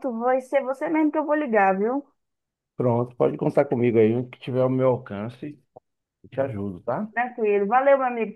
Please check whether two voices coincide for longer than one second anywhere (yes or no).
no